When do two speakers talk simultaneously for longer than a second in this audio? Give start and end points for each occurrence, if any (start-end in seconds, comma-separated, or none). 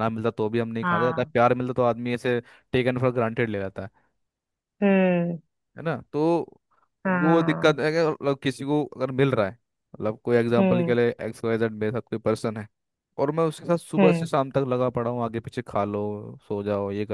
none